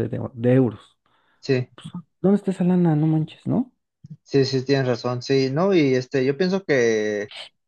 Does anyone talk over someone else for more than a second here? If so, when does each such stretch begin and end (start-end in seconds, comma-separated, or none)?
none